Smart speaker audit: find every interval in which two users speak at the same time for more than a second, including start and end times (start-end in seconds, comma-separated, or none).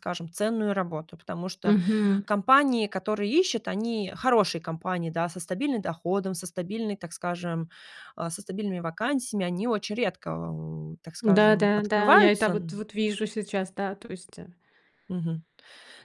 11.2-12.8